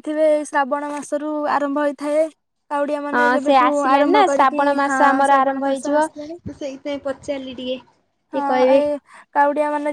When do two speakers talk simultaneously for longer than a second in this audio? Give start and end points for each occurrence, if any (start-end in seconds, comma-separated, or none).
3.2-6.0